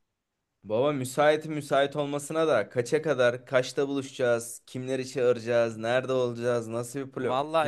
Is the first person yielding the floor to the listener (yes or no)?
yes